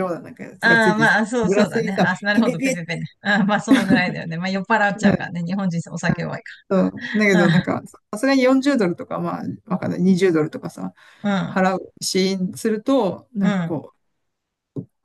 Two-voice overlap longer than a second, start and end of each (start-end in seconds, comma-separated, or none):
0.6-2.8